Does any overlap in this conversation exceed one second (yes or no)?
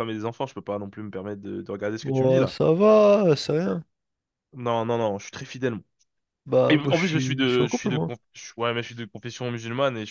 yes